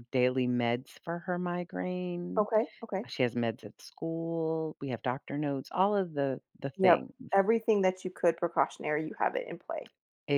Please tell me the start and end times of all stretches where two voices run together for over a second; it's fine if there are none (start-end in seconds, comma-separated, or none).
none